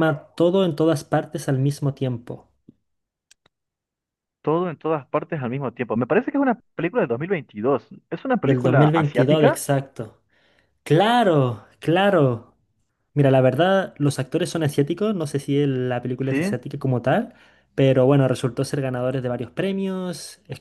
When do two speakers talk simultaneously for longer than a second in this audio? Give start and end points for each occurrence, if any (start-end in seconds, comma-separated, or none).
8.4-9.6